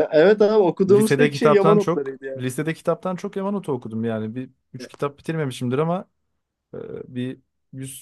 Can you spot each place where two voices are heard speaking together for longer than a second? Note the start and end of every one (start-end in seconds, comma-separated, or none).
0.9-2.4